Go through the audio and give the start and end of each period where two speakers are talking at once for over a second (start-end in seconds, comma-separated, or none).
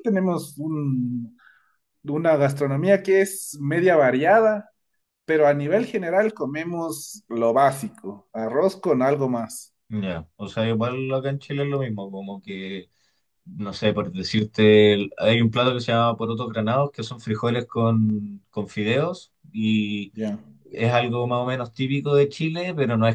none